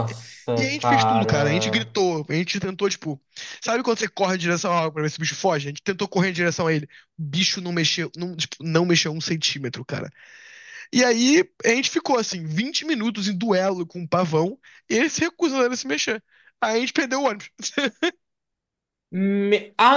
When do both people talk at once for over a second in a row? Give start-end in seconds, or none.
0.5-1.9